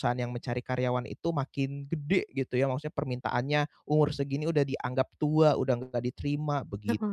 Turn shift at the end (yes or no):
yes